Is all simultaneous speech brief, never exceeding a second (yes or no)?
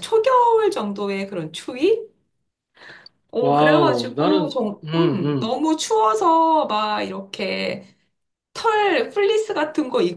no